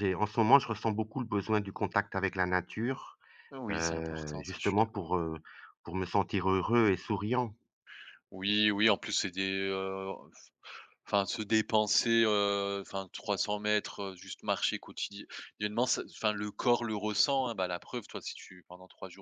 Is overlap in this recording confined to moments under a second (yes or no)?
no